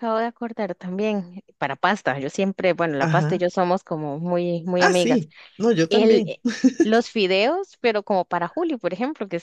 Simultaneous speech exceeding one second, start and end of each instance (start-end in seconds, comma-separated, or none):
none